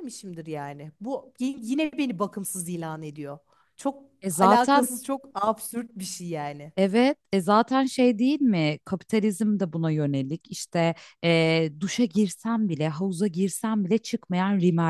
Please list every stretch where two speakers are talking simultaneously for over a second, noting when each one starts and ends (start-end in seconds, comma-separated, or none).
none